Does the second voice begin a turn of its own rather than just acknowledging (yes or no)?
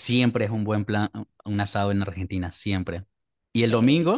no